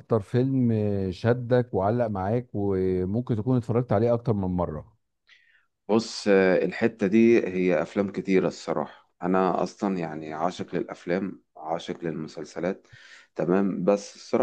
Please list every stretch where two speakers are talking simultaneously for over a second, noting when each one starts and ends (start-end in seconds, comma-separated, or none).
none